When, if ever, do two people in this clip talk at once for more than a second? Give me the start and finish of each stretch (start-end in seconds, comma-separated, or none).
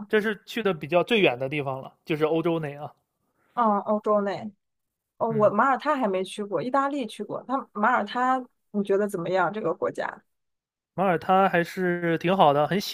none